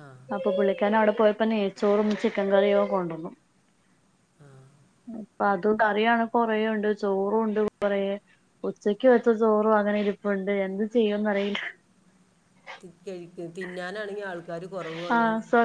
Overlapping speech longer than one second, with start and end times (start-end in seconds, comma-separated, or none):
none